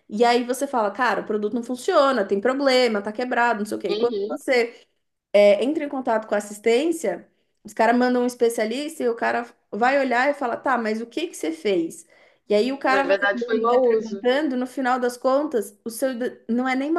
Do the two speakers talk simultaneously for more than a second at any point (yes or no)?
yes